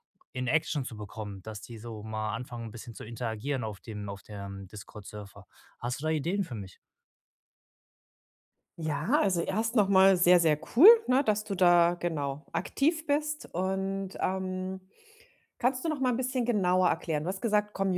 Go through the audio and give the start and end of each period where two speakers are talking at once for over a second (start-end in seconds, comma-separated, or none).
none